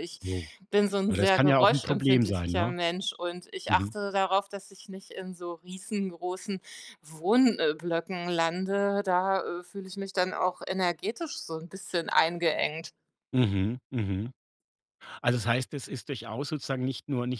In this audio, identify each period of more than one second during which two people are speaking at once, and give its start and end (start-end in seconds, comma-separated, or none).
1.1-2.8